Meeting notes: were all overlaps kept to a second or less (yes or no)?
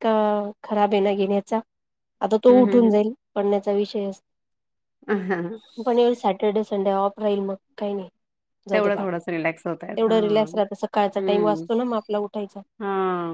yes